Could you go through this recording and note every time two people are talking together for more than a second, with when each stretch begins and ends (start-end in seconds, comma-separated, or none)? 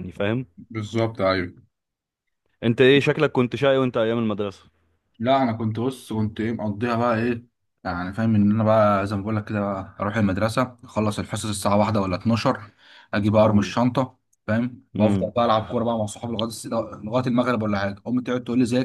none